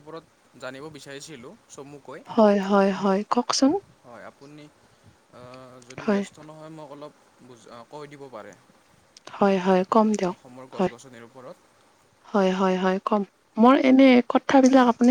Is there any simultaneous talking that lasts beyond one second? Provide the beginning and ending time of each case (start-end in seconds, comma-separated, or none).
none